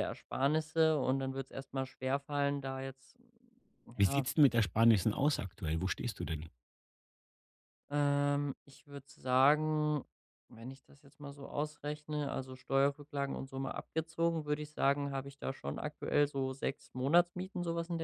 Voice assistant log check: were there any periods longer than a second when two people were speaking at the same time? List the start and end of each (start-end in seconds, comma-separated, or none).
none